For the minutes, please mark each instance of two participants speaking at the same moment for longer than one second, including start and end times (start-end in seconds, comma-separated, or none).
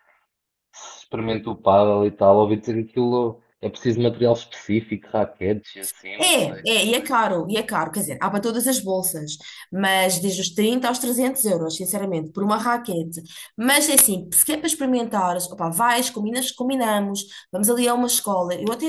none